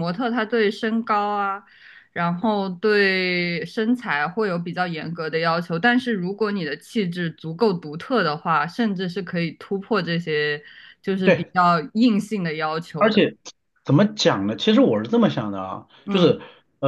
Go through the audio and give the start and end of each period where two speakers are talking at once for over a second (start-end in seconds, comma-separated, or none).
none